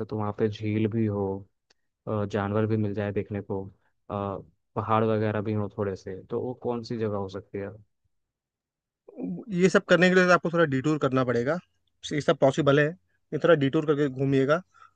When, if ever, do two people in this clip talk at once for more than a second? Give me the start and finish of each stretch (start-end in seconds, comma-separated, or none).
none